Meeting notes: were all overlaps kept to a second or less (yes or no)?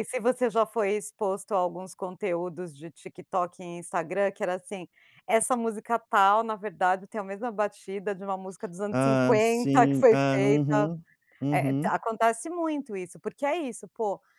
no